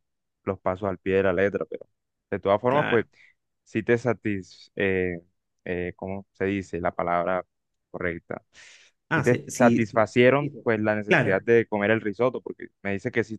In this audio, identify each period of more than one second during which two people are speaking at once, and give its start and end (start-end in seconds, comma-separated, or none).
9.1-11.4